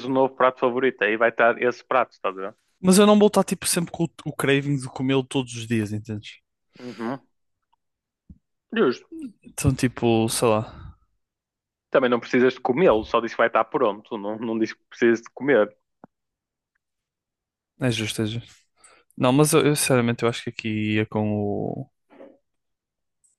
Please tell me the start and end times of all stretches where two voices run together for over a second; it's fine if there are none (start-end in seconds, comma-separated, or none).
none